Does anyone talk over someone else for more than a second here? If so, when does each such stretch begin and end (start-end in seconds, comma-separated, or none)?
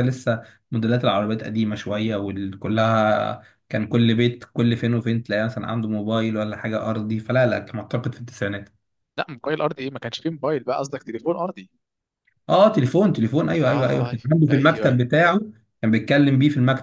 13.6-15.0